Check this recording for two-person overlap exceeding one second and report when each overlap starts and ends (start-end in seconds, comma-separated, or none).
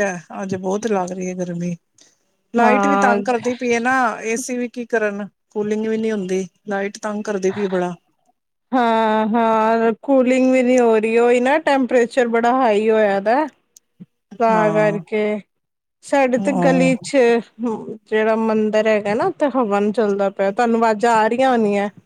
none